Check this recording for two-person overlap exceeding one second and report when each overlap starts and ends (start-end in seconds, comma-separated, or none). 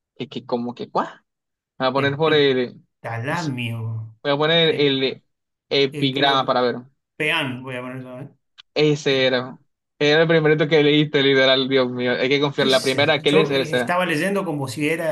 12.6-14.0